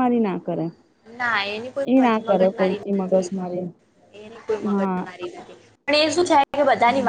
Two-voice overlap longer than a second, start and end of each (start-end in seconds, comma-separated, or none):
2.2-3.5